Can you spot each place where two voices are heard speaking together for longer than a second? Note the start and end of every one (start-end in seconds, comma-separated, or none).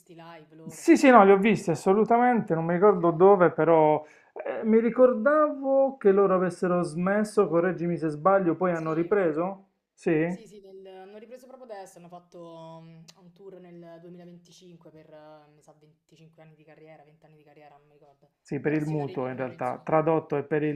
18.4-19.9